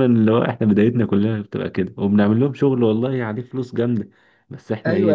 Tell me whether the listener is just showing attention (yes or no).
no